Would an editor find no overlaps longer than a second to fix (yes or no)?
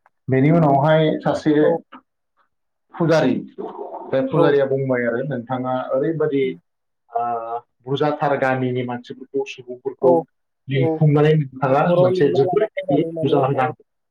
no